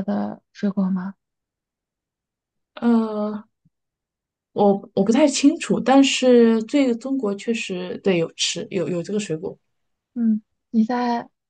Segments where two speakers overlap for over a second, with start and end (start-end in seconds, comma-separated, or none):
none